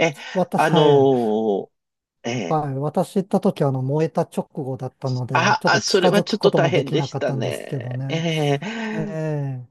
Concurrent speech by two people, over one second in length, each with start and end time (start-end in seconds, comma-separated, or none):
5.3-8.2